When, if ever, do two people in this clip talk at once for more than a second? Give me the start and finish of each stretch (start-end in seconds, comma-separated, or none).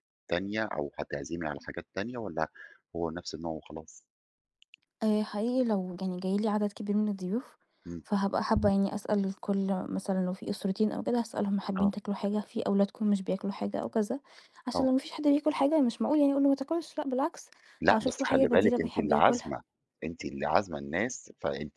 17.9-19.5